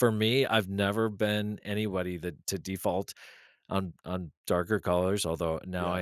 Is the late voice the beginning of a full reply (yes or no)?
no